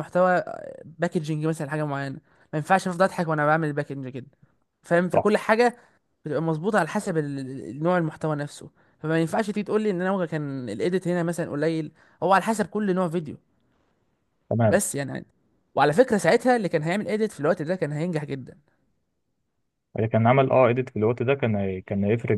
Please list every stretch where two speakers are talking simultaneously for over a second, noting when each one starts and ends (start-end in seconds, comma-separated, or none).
none